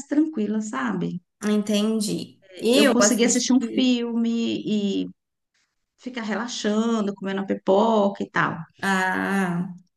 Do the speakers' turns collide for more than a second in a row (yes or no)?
yes